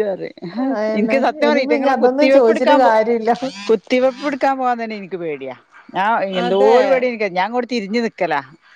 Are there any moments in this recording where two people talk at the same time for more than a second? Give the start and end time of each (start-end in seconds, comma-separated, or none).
1.0-2.9